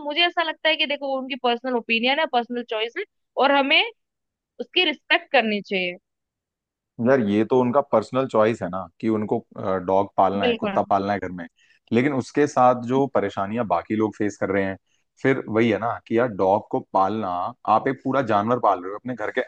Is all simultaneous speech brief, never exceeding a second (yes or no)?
yes